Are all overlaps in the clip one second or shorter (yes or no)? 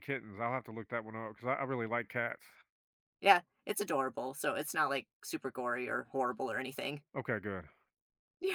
yes